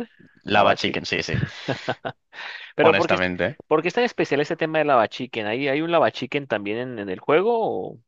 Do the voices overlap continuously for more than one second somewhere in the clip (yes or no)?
no